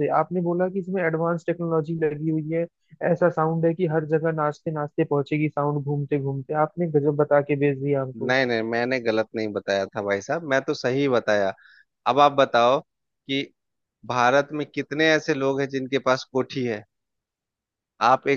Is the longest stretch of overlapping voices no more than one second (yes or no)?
yes